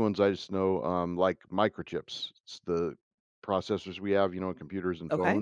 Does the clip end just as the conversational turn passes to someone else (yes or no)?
no